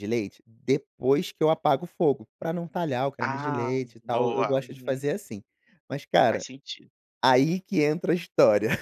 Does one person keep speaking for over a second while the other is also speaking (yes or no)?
yes